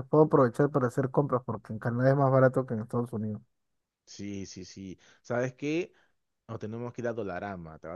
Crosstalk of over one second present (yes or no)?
no